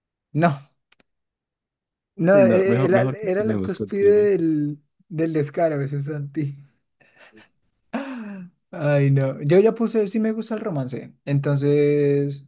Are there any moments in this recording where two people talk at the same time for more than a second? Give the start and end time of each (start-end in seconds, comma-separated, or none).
2.3-4.4